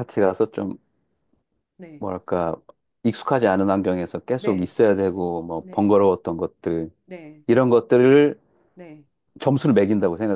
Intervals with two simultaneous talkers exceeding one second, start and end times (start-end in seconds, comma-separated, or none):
none